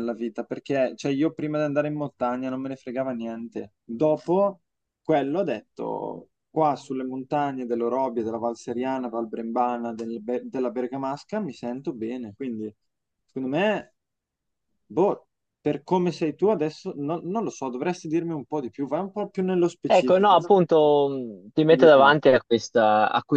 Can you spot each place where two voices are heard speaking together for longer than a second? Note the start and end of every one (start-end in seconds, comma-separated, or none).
none